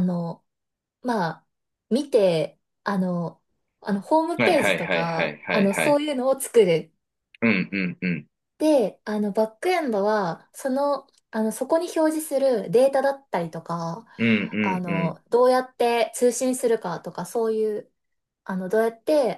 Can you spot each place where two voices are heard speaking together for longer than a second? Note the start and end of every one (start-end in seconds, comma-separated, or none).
4.4-6.0